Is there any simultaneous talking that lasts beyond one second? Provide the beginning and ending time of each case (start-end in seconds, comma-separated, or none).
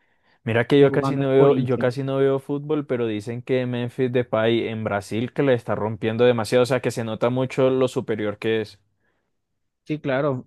0.8-2.0